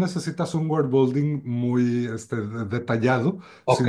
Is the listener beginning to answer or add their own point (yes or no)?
no